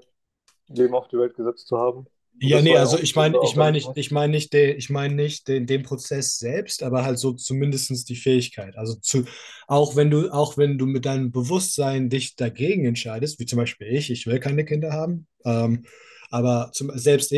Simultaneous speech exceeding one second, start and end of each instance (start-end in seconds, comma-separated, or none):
2.4-4.0